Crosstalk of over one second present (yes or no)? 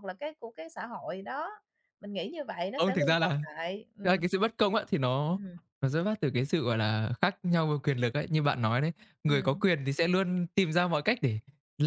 no